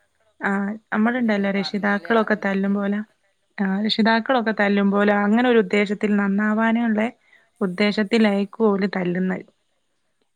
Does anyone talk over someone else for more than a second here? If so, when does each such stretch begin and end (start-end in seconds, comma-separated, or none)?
1.1-3.0